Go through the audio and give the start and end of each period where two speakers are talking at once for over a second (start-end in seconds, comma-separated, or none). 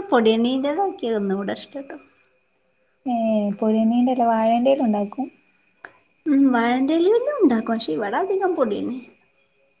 none